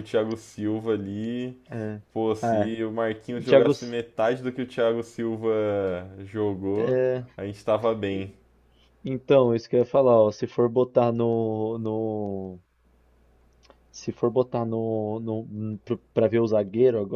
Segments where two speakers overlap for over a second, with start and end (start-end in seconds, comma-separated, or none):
none